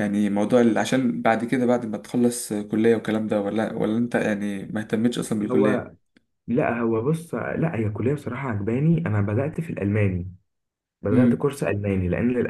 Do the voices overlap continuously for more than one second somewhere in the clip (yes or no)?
no